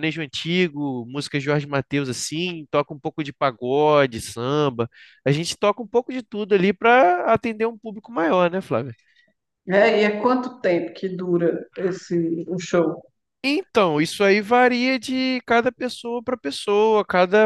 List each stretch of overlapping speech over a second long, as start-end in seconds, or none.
none